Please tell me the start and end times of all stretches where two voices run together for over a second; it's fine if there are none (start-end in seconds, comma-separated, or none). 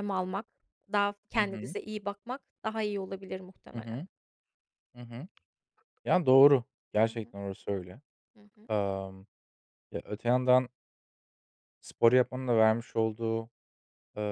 none